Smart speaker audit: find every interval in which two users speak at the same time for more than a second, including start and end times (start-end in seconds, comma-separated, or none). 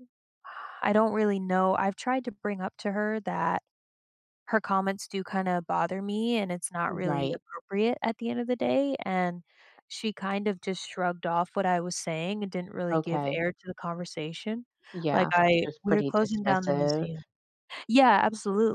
15.1-17.1